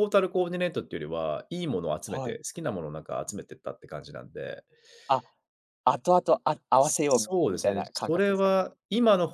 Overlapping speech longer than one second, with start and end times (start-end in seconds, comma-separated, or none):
6.8-8.6